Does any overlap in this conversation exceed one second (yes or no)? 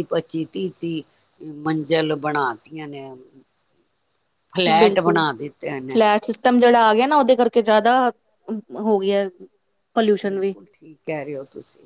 no